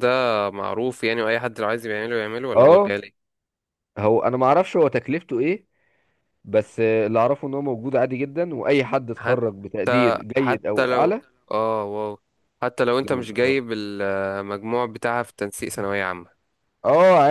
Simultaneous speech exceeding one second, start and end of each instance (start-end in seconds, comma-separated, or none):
9.1-11.1